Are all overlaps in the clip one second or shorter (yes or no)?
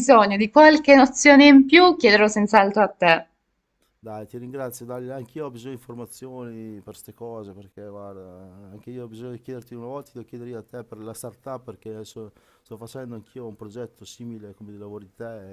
yes